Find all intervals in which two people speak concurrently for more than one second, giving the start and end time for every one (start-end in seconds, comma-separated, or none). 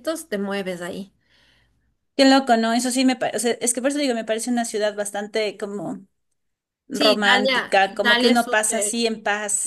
6.9-9.1